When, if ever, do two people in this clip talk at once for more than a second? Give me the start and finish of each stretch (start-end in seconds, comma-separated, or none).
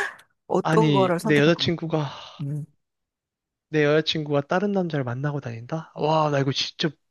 0.6-1.9